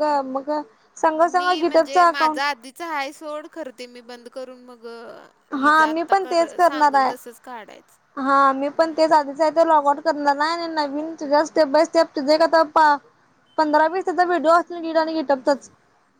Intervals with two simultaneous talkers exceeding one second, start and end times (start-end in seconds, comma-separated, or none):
5.5-7.1